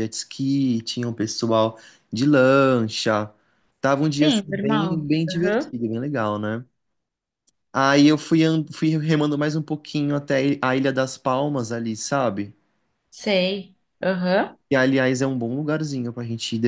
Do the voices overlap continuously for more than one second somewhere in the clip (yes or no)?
yes